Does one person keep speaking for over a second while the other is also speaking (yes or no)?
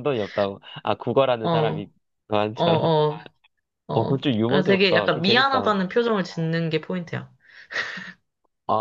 yes